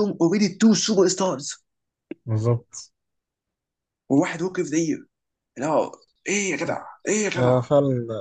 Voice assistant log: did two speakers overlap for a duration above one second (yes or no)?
no